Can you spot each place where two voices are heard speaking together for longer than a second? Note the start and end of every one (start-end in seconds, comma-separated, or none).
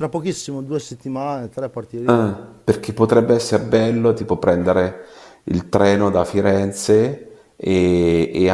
none